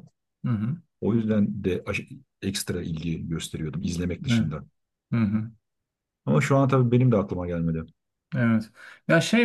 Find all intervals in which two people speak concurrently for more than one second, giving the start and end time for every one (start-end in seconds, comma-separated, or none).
none